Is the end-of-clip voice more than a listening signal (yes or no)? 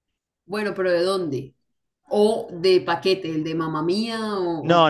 yes